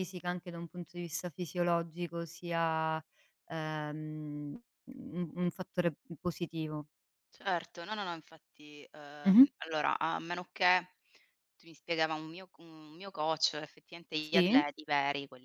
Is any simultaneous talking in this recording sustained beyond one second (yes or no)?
no